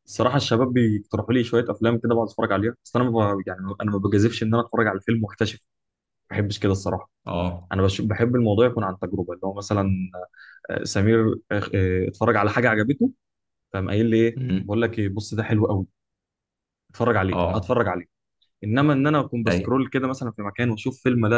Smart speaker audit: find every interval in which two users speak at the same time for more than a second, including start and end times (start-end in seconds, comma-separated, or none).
none